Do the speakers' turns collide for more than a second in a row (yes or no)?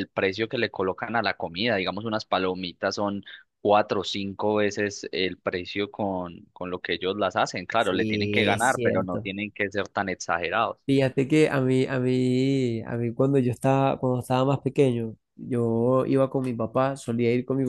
yes